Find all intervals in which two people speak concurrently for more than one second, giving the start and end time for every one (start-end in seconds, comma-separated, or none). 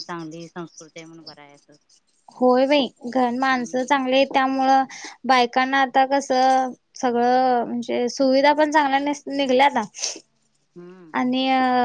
none